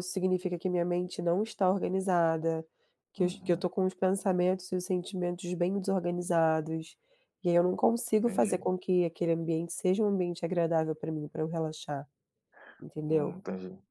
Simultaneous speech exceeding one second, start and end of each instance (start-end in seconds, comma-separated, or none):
none